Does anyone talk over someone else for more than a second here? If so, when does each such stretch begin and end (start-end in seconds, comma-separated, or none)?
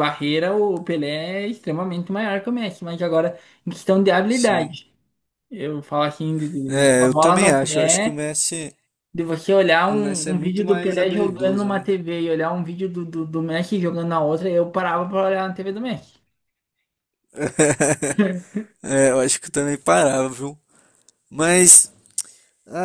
6.7-8.3, 9.9-11.9